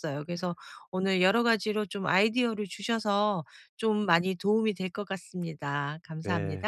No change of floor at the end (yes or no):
no